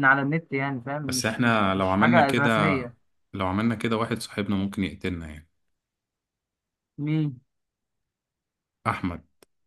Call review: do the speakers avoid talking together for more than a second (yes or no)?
no